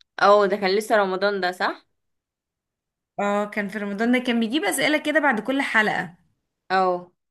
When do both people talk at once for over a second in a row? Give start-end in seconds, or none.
none